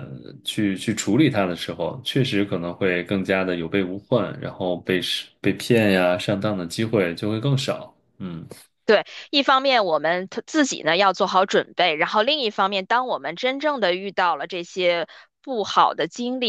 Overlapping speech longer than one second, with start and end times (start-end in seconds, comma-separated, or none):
none